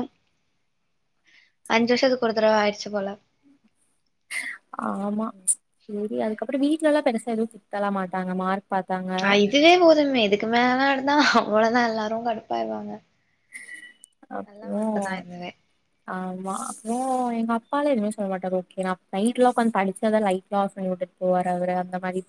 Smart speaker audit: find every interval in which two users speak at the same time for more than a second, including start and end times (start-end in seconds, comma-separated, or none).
none